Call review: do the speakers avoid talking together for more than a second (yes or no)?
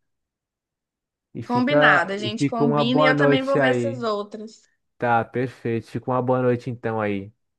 no